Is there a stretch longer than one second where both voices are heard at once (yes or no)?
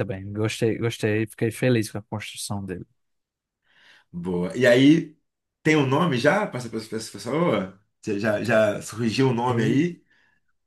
no